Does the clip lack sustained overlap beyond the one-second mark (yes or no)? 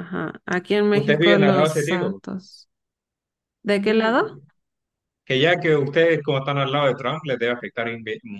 no